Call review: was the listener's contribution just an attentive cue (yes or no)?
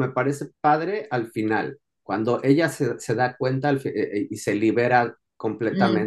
no